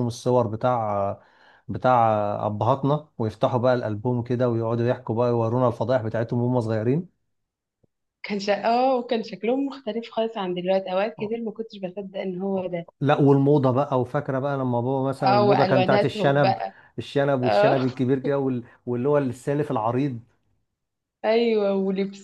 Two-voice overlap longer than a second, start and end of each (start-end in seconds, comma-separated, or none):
15.2-16.6